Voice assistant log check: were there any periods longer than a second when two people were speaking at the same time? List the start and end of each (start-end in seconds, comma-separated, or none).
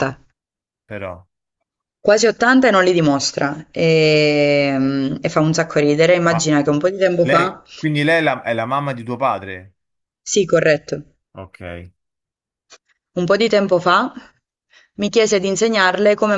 none